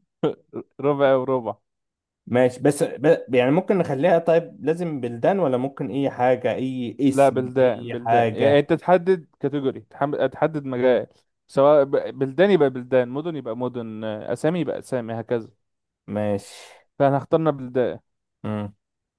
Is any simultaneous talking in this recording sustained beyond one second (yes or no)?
yes